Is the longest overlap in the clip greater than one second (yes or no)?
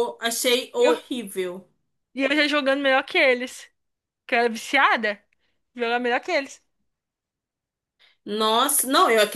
no